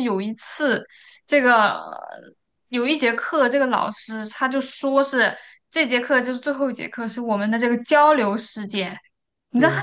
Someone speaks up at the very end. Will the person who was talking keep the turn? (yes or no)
yes